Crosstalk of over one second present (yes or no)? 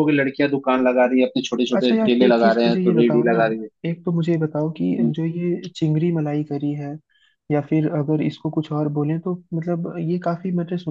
yes